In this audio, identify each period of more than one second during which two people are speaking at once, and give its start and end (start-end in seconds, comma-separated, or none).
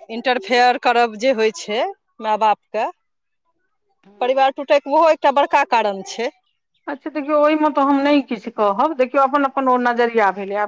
none